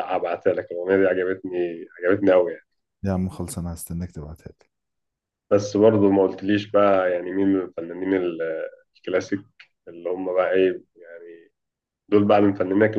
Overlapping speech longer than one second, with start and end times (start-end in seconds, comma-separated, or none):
none